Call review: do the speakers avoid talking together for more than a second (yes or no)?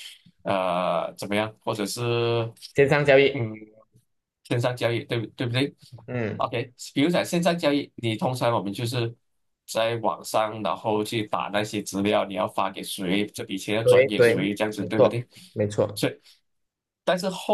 no